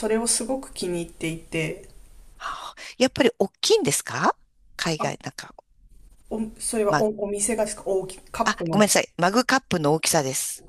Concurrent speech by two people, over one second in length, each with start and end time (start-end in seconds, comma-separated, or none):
none